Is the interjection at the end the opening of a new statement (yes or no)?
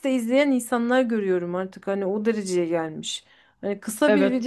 no